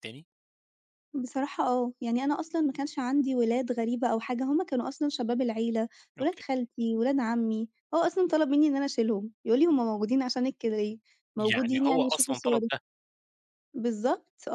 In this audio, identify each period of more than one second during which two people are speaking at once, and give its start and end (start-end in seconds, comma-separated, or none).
11.4-12.7